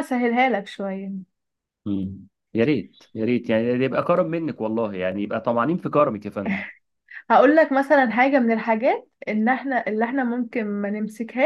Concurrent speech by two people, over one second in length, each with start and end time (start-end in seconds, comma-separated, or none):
none